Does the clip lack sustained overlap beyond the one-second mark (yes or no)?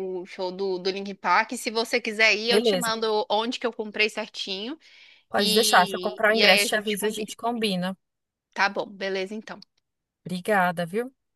no